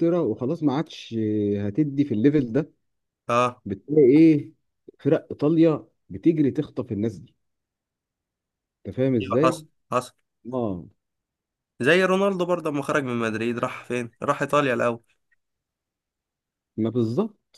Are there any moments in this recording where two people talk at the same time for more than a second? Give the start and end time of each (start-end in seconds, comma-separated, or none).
none